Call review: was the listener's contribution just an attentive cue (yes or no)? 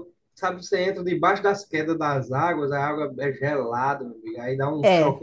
yes